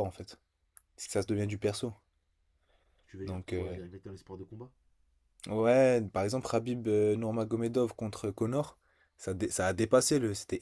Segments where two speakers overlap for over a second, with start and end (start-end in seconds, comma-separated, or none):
none